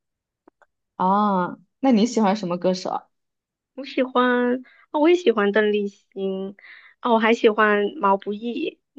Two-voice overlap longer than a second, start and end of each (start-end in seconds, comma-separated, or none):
none